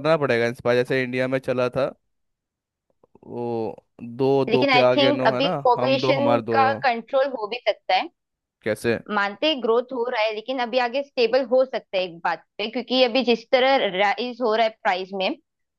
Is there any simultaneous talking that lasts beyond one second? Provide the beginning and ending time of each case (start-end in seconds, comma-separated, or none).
4.5-6.5